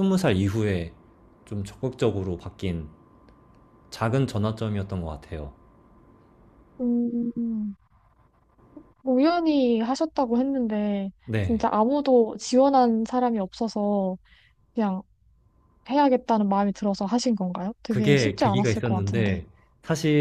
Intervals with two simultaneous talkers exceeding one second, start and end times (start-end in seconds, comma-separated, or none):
17.9-19.4